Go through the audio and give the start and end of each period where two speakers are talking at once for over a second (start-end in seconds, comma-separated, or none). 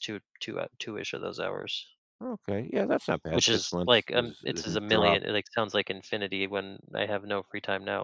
3.3-5.2